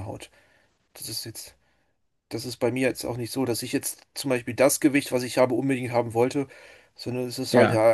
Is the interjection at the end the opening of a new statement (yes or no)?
no